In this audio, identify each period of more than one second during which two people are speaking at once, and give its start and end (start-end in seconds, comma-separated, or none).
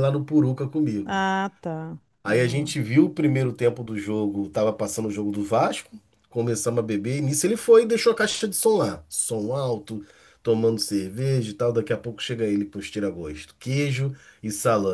none